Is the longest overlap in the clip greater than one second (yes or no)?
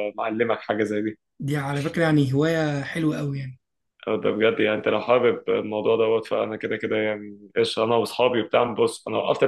no